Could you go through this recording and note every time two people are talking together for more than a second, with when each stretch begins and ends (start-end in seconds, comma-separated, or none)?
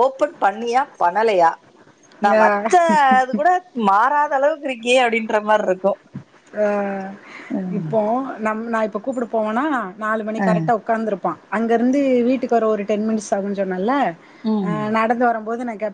none